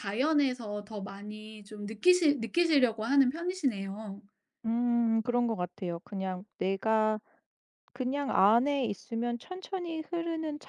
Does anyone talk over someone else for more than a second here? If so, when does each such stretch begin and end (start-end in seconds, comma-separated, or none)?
none